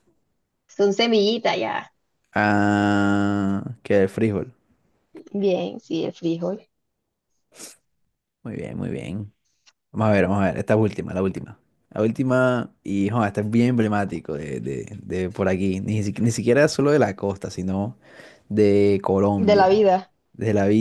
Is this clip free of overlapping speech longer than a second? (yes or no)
yes